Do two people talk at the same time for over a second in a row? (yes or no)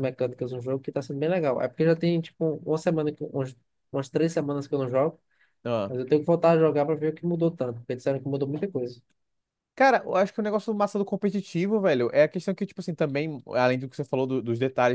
no